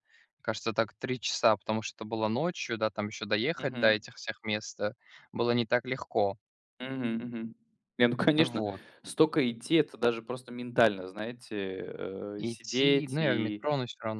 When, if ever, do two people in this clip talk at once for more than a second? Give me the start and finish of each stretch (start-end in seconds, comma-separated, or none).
12.4-13.7